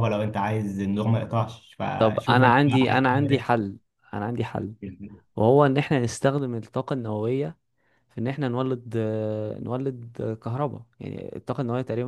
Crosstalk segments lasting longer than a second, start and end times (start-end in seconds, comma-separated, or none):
2.0-3.5